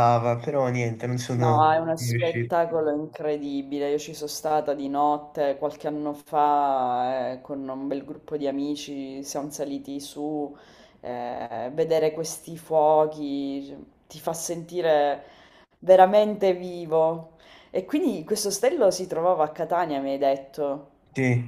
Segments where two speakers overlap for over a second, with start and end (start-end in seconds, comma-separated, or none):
1.3-2.5